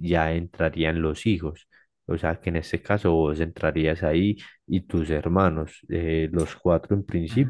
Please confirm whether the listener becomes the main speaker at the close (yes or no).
no